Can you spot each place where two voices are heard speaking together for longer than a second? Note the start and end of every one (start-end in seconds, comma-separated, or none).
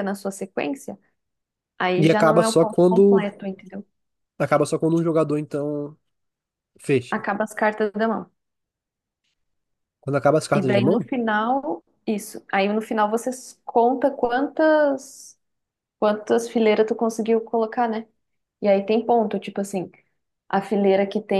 2.0-3.2